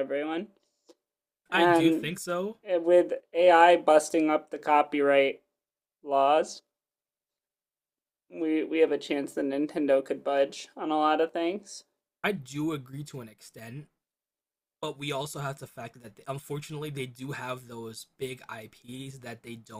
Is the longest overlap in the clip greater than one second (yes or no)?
no